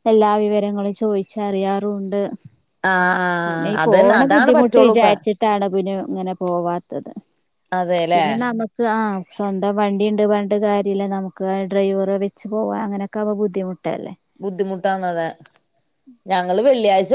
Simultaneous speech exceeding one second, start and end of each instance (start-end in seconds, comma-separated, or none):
3.5-5.1